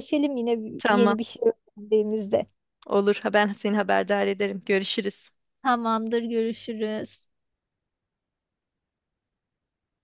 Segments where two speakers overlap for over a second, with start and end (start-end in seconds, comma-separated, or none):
none